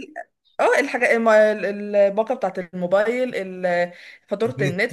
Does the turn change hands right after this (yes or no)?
no